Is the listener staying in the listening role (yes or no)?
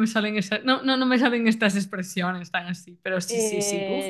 no